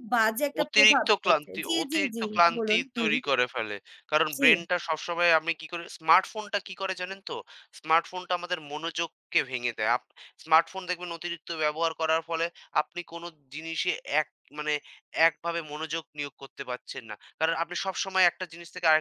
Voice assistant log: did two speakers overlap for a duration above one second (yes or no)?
yes